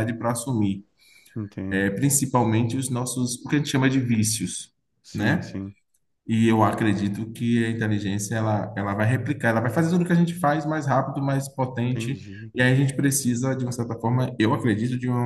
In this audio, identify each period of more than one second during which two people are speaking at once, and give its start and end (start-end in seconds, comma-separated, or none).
none